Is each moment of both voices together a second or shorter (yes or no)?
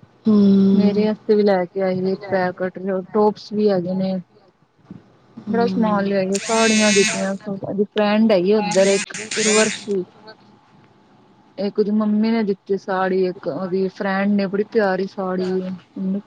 yes